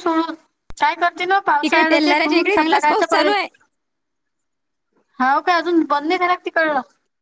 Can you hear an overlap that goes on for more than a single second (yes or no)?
yes